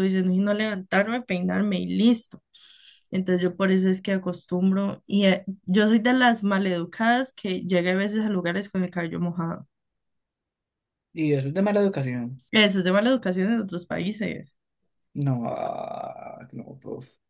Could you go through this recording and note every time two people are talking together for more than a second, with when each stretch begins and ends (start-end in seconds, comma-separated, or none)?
none